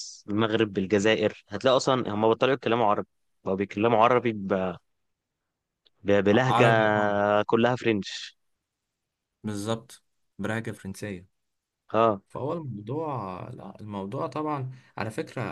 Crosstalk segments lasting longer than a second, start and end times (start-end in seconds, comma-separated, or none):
none